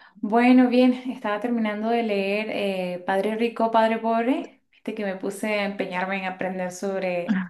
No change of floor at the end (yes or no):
yes